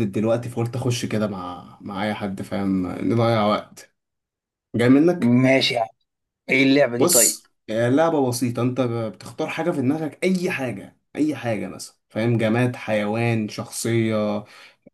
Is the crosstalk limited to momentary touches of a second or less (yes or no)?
yes